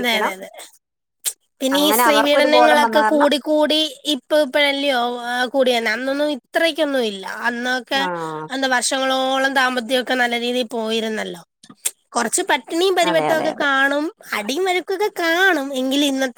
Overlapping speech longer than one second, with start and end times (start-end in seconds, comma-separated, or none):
1.8-3.3